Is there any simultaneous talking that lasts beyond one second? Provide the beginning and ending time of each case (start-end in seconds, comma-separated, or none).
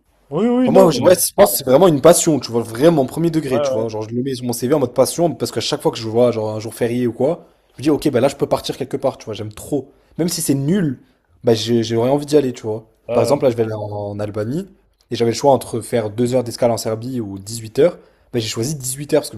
none